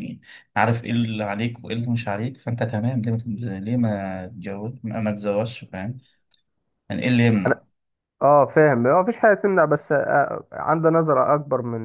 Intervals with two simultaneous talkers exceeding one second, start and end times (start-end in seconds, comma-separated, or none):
none